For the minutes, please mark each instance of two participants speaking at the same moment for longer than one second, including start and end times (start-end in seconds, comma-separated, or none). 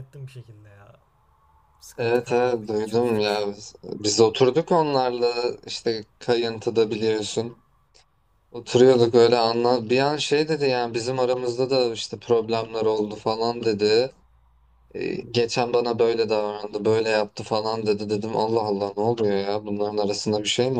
2.0-3.5